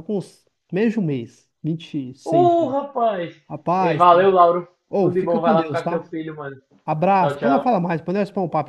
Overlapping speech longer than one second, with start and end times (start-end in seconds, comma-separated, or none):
4.9-6.1